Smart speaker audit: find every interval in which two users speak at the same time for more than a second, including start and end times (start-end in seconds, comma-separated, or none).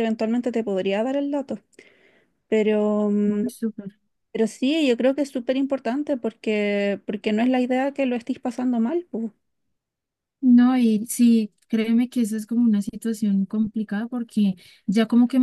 none